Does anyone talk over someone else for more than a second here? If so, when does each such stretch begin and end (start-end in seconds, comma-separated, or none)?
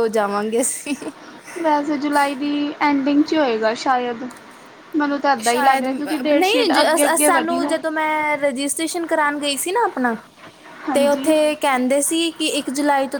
5.4-7.7